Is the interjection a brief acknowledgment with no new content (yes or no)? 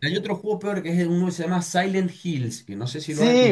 no